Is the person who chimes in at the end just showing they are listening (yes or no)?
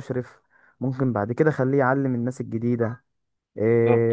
yes